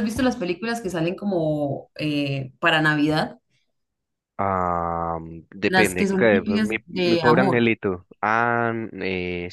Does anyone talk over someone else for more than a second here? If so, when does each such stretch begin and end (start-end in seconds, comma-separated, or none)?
5.7-7.7